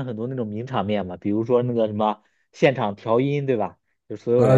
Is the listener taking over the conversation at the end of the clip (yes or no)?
yes